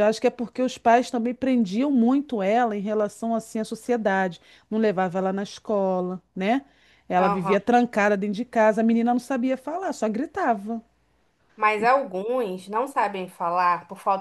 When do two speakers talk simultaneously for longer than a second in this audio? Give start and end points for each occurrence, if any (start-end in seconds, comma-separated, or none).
none